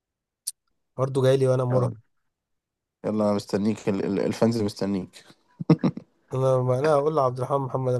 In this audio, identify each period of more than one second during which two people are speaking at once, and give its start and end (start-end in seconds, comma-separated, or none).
none